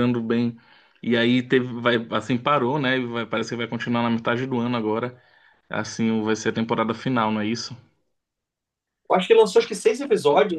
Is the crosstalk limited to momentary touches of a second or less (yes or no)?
yes